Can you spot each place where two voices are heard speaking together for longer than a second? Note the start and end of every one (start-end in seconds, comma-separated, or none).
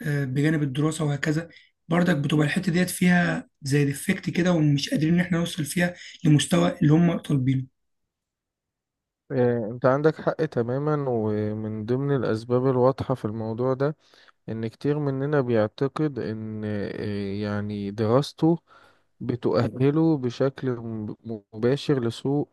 none